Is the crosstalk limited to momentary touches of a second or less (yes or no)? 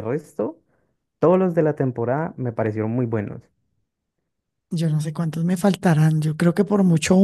yes